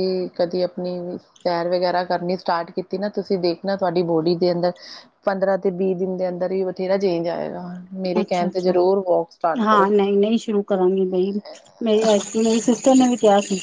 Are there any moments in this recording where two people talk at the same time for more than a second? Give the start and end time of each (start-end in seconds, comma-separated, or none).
none